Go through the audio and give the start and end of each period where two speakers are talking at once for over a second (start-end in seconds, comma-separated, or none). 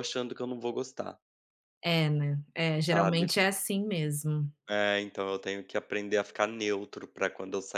none